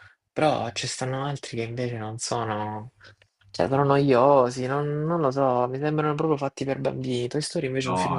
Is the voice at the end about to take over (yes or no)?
yes